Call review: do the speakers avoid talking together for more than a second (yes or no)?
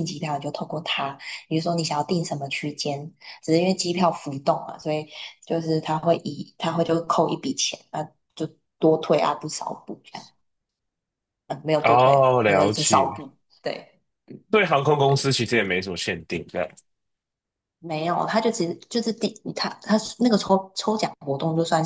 no